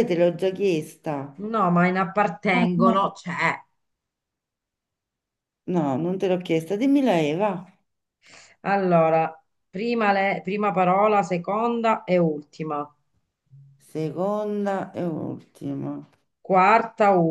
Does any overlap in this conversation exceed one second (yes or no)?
no